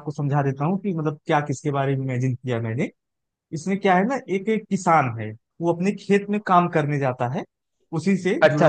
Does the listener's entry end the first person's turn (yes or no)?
yes